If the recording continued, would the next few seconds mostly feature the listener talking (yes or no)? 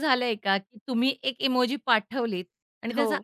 no